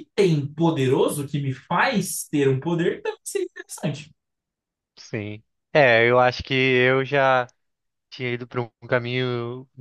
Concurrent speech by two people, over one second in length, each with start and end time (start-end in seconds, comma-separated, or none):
none